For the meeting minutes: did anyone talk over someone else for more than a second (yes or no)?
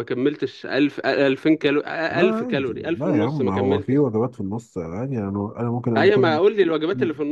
yes